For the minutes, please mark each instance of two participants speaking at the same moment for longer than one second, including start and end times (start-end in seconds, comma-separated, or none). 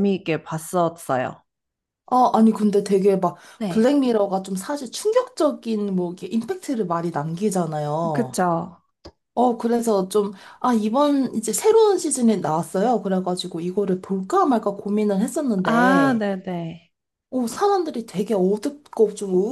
none